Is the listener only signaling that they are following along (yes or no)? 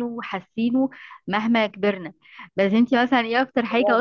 yes